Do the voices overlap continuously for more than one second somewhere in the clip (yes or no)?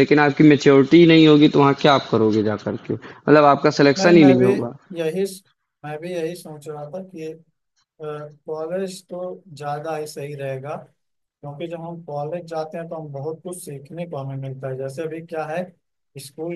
no